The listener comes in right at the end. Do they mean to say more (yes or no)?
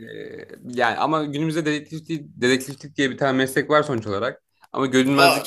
no